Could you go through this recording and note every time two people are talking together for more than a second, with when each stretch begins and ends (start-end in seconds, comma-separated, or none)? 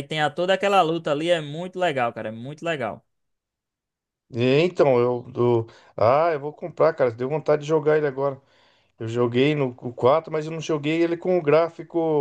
none